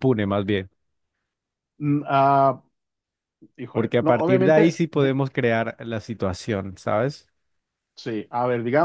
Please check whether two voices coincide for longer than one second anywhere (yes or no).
yes